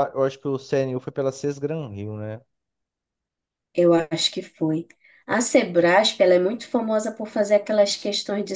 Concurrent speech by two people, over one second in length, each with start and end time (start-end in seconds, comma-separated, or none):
none